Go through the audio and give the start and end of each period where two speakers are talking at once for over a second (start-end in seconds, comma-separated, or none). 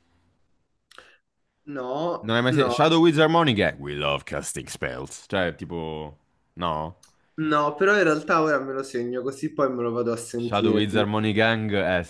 none